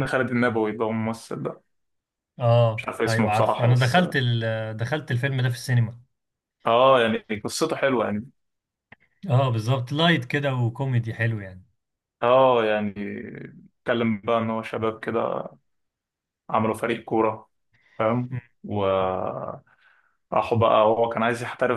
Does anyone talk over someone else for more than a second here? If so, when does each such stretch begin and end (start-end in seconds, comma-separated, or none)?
2.8-4.0